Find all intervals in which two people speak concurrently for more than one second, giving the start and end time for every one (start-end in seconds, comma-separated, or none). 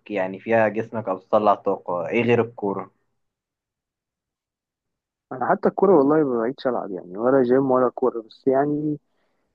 none